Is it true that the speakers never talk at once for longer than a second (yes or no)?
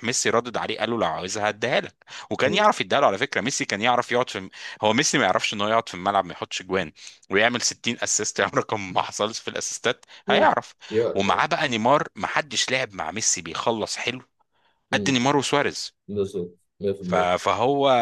yes